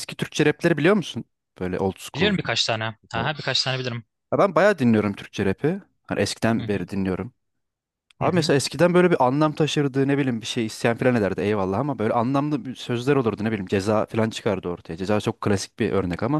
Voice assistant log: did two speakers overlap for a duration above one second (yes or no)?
no